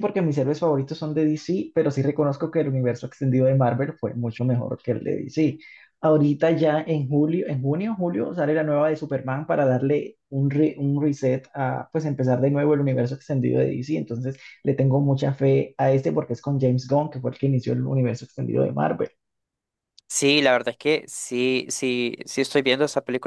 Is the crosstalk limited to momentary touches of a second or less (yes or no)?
yes